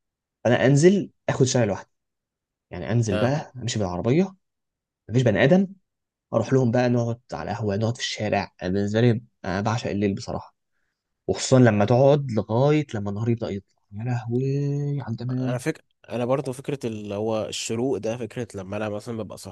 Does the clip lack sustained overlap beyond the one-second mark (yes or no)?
yes